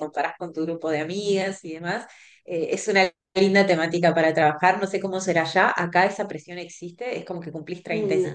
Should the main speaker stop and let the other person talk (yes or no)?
no